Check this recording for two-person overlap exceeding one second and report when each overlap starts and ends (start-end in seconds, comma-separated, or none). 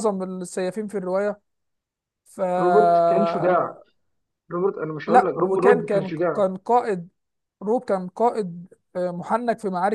5.1-6.4